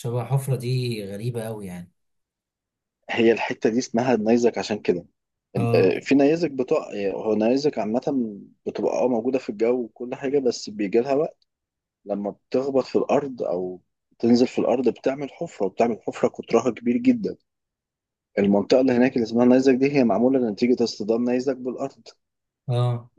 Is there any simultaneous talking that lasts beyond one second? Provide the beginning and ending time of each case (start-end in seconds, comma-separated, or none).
none